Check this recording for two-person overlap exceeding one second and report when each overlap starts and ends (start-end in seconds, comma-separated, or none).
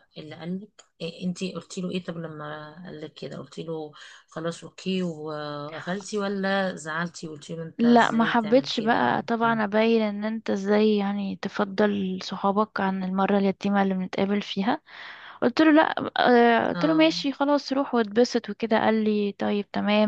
7.8-9.2